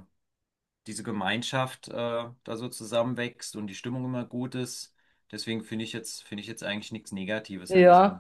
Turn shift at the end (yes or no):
yes